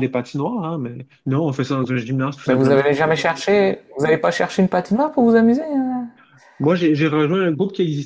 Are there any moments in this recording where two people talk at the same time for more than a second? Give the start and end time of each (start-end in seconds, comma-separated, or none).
none